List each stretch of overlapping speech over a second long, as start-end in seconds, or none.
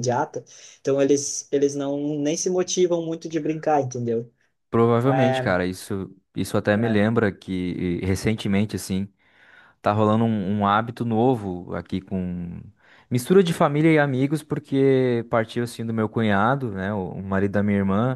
none